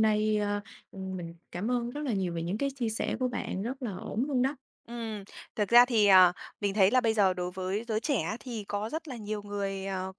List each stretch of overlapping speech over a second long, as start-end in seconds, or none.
none